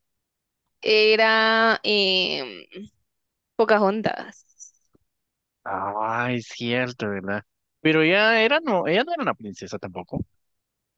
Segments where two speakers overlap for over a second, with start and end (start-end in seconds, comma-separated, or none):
none